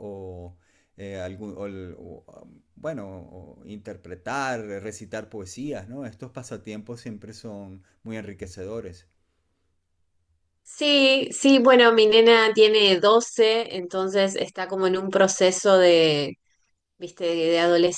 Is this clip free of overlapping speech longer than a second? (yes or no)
yes